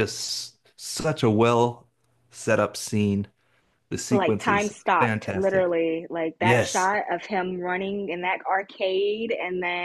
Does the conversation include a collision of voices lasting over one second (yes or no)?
yes